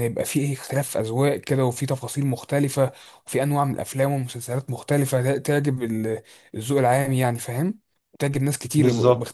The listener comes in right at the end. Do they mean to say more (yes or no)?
no